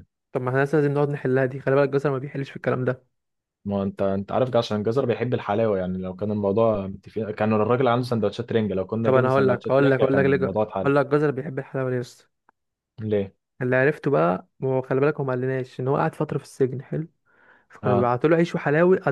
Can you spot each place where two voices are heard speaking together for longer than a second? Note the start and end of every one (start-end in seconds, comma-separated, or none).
9.0-10.9